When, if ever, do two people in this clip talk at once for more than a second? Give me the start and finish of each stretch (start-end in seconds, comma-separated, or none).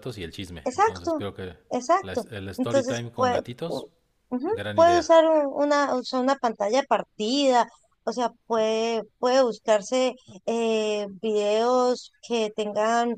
2.0-3.9